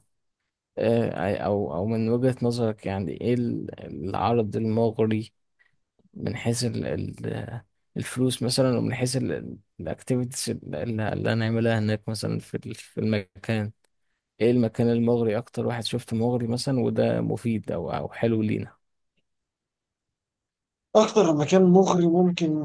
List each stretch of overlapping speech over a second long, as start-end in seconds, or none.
none